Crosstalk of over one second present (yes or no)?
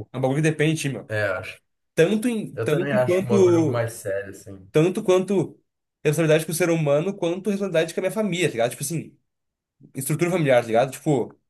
yes